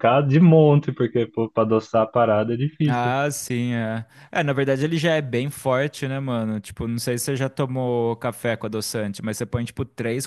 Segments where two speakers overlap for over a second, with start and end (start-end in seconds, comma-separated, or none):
none